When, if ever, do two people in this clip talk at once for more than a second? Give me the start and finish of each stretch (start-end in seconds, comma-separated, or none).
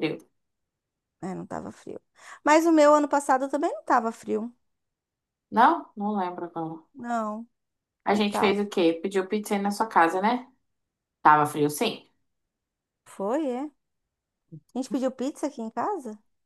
none